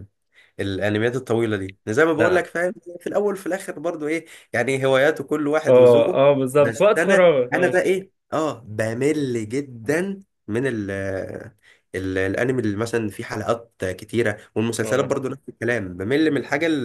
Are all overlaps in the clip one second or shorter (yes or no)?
no